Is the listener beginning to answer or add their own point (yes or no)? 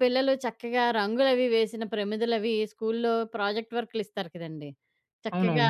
no